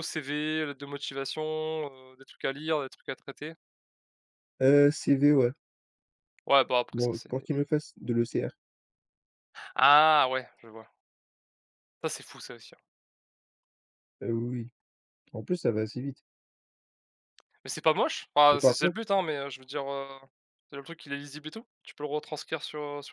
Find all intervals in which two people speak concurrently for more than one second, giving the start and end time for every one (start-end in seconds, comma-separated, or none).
none